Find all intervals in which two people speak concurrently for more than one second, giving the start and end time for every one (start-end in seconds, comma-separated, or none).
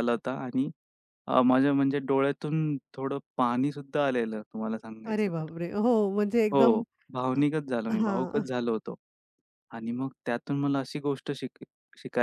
none